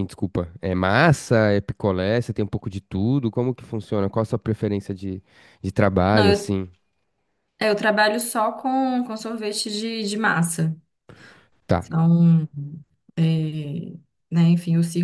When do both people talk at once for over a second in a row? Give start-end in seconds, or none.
none